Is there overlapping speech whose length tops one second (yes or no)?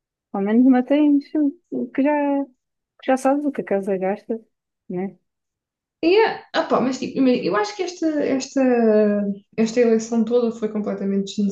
no